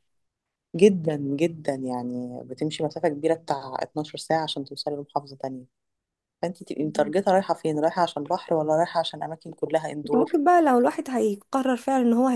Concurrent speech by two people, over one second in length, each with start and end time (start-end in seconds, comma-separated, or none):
none